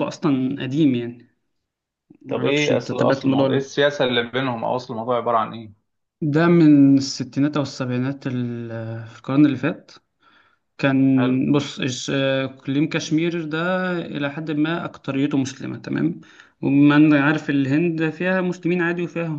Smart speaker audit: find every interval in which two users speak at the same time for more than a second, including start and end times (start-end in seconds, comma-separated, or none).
2.3-3.7